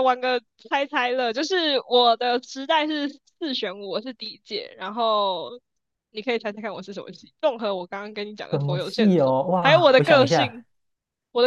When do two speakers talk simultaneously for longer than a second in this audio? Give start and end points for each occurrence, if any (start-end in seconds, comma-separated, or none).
8.5-10.6